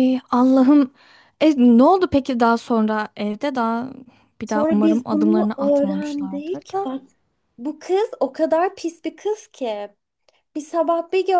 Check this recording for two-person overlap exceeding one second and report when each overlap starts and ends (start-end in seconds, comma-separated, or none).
4.5-6.9